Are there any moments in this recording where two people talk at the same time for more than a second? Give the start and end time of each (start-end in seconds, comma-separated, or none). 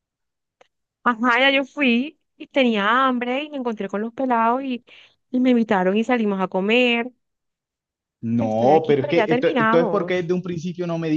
8.4-10.3